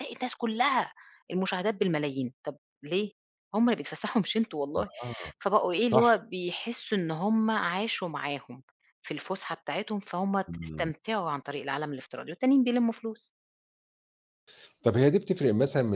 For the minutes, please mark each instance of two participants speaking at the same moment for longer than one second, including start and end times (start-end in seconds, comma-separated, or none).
none